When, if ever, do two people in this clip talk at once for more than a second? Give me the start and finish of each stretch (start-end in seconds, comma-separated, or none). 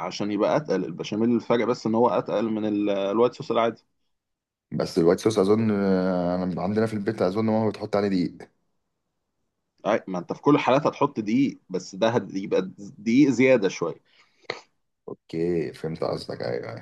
none